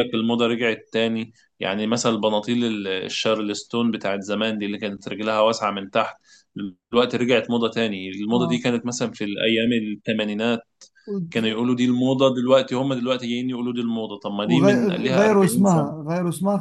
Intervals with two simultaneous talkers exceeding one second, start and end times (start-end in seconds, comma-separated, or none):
14.4-16.1